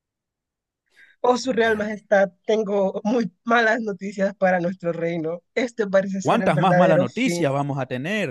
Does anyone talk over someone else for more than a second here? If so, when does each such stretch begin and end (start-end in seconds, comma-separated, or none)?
6.2-7.5